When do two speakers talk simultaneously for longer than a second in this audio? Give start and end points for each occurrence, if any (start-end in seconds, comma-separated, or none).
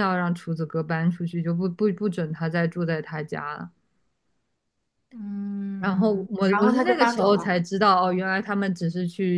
5.8-7.6